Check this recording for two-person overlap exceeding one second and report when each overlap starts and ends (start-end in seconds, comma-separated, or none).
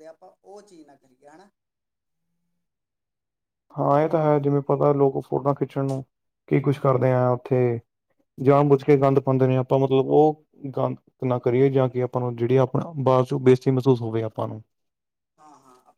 none